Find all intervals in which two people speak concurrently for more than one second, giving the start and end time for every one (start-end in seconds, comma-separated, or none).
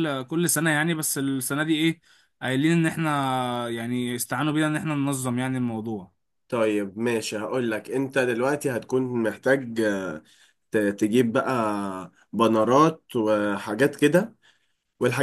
none